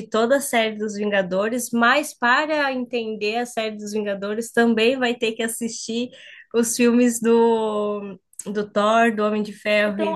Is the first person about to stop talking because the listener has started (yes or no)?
yes